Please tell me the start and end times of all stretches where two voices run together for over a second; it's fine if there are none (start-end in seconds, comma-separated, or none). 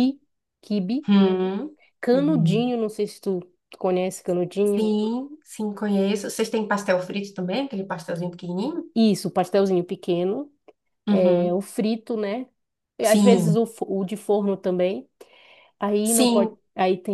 none